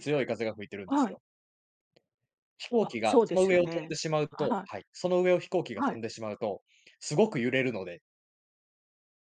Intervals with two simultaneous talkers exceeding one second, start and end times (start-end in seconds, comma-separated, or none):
2.8-4.7